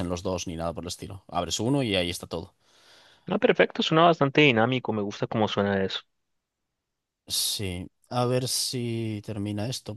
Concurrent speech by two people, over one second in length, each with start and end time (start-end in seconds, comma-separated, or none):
none